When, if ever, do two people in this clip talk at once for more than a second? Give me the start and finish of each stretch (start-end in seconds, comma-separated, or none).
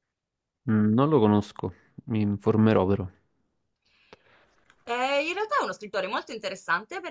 none